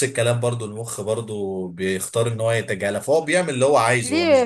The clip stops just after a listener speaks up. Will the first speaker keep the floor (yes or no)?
no